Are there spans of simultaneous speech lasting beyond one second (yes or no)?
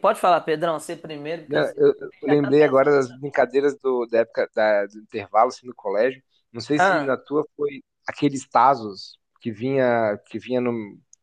yes